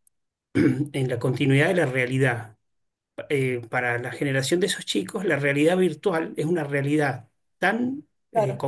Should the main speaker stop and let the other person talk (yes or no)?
no